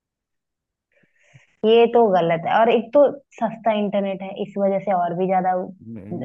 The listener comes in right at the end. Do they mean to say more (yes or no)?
yes